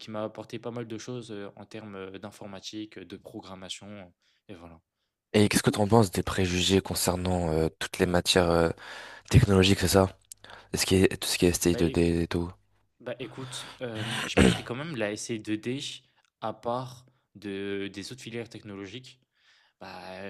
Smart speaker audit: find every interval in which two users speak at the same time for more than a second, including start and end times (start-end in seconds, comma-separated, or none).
none